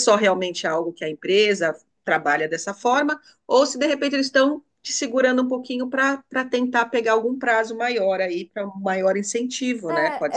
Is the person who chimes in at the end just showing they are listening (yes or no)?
no